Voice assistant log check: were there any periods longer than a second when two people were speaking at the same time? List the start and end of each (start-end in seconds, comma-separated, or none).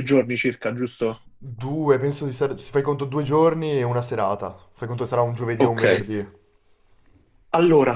none